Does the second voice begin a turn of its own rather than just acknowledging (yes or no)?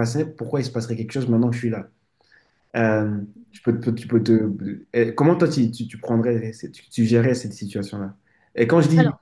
no